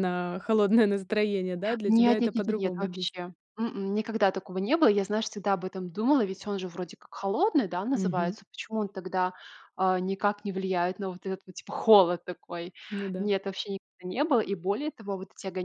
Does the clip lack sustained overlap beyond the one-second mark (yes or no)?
no